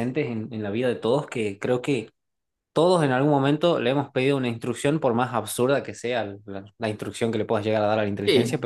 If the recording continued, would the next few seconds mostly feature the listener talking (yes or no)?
yes